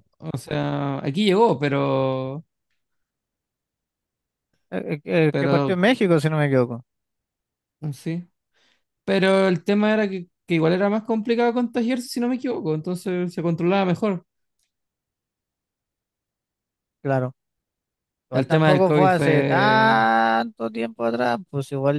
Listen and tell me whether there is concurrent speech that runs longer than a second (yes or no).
yes